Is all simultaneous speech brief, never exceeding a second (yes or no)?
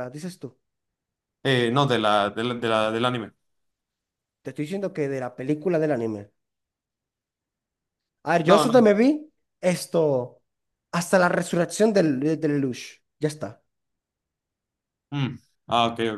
yes